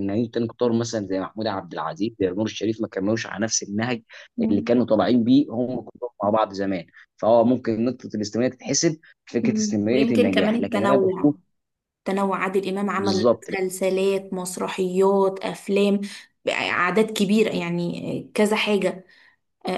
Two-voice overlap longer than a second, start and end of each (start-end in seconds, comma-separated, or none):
9.4-11.3